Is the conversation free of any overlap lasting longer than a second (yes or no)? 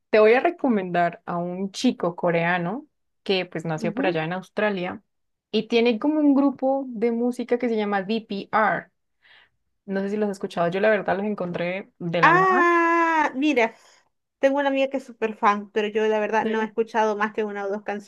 yes